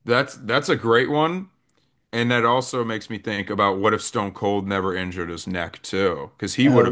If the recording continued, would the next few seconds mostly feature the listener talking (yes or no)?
no